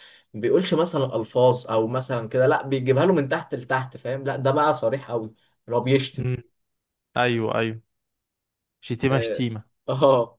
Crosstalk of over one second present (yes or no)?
no